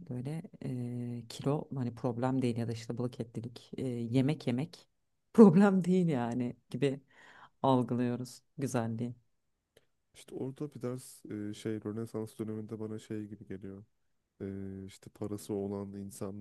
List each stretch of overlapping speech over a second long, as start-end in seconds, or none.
none